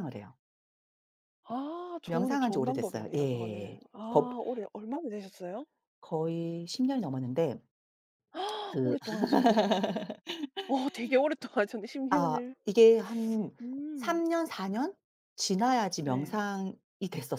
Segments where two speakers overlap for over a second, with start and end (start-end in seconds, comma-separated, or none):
2.0-4.3